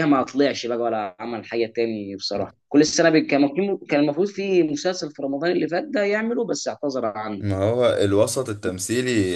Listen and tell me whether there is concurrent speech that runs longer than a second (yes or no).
no